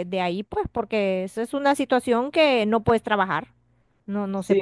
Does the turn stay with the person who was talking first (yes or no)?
no